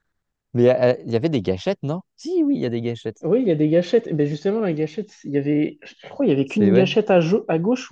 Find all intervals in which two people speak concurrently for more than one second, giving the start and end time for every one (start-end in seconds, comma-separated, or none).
none